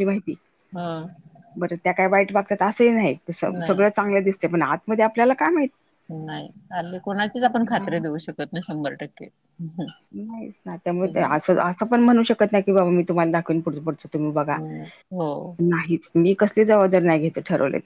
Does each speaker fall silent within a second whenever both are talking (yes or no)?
yes